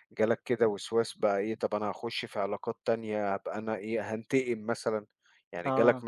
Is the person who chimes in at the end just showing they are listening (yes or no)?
yes